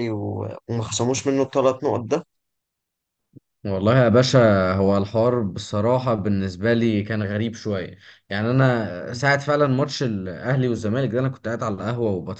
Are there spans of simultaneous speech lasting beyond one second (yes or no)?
no